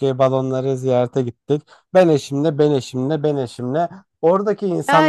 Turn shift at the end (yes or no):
yes